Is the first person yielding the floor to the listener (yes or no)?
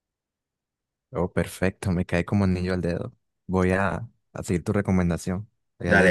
yes